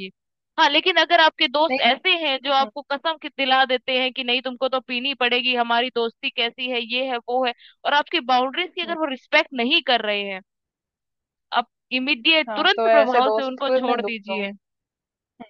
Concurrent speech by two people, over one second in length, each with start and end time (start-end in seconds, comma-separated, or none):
12.5-14.4